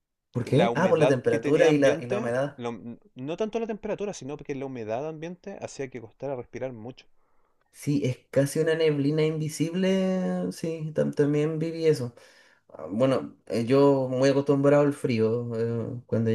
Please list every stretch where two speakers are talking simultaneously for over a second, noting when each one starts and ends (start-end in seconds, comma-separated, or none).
0.5-2.6